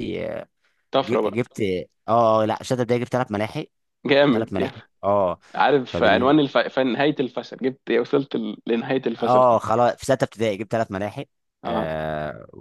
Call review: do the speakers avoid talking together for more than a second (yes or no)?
yes